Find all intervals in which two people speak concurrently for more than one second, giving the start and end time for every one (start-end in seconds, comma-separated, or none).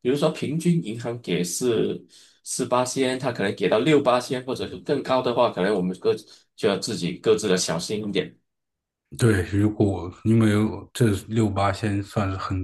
none